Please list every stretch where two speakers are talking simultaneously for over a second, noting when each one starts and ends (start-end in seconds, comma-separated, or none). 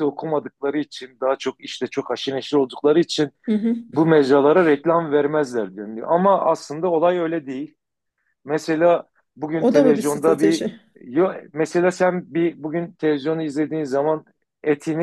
9.5-10.8